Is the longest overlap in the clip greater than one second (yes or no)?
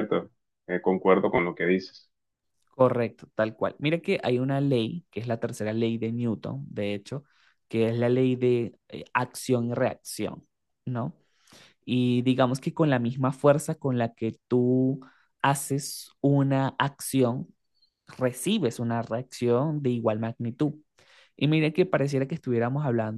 no